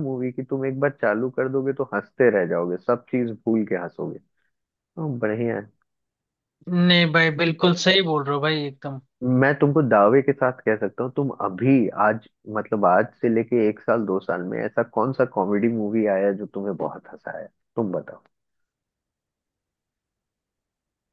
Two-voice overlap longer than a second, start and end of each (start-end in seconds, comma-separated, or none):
none